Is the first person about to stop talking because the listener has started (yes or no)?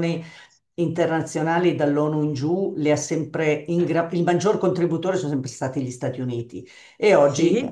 no